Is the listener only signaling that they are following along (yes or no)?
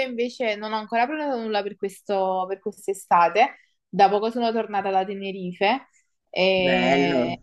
yes